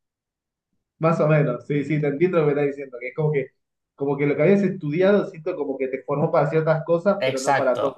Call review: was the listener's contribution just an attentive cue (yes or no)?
no